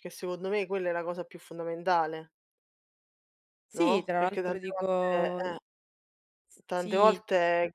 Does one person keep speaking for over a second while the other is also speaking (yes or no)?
yes